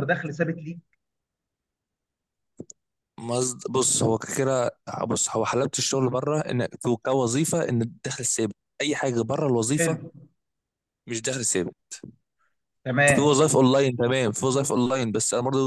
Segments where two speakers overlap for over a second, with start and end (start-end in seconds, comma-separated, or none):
none